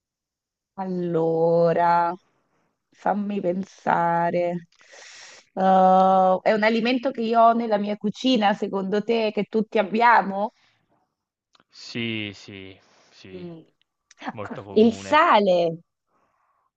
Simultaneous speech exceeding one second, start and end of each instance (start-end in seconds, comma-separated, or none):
none